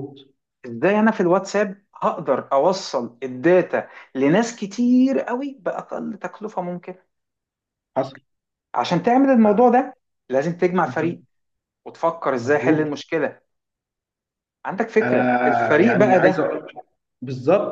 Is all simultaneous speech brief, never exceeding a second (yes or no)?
no